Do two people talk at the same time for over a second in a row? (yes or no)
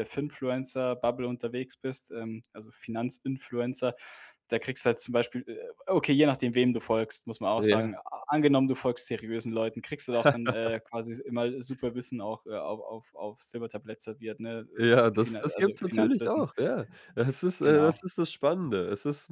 yes